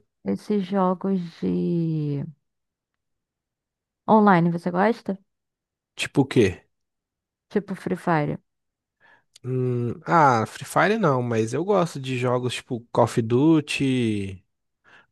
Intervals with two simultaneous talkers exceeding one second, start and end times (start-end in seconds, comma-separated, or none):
none